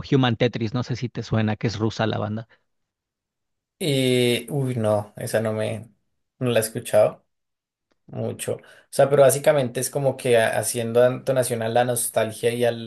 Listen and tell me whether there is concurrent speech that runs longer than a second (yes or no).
no